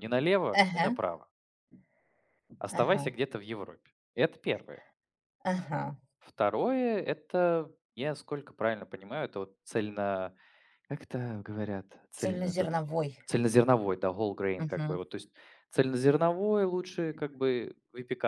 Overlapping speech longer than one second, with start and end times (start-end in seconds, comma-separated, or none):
none